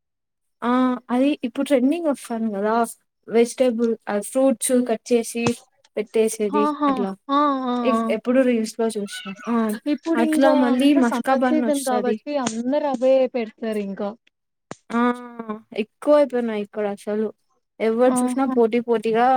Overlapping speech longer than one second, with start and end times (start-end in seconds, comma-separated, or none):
10.2-12.2